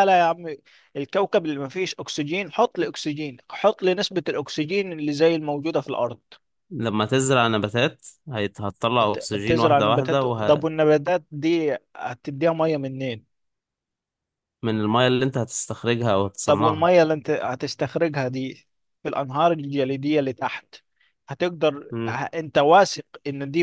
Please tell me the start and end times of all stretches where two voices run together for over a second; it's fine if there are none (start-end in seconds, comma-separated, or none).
9.0-10.7